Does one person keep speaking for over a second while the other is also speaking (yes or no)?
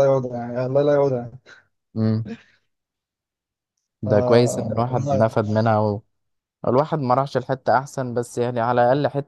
yes